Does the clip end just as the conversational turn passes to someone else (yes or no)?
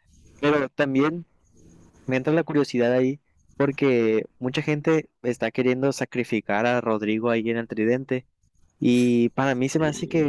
no